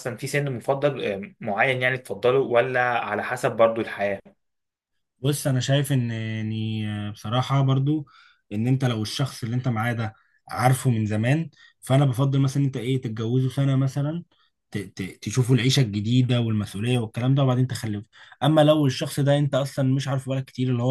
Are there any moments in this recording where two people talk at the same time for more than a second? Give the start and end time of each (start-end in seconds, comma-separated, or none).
none